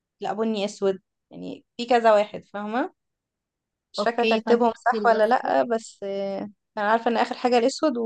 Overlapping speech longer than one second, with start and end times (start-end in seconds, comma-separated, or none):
4.0-5.5